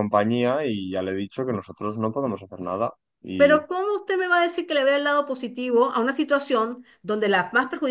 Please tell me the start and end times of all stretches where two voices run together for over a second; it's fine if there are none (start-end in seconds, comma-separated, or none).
none